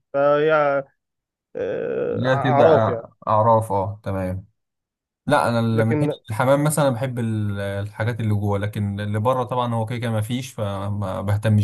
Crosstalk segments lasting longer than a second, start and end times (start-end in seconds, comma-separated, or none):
none